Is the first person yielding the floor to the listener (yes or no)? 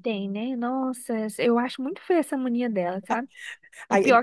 yes